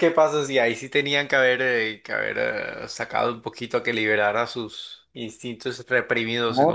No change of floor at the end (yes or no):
no